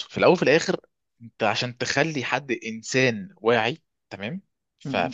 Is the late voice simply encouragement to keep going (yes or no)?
yes